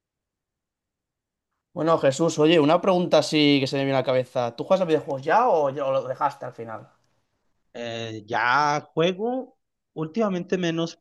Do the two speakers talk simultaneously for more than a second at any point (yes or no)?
no